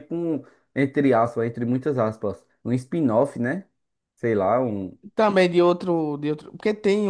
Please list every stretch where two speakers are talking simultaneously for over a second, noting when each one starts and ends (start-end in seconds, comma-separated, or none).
none